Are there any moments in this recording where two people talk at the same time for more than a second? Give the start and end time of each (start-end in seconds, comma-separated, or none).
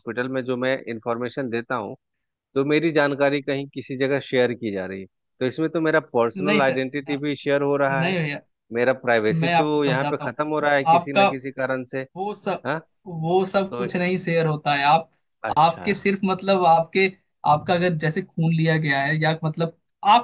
9.4-11.3